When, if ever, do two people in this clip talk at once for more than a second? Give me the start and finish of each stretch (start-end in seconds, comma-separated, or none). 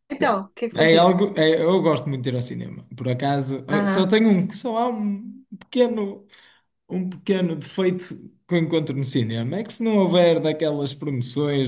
none